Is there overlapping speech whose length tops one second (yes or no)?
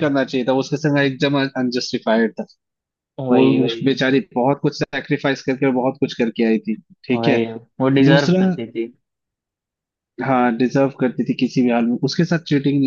no